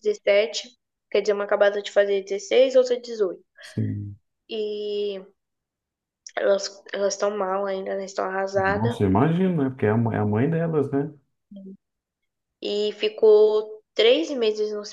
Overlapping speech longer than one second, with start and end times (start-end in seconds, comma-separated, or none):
none